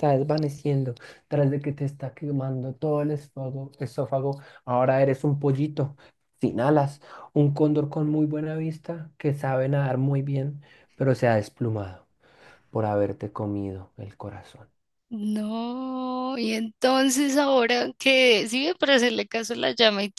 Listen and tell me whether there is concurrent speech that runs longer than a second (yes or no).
no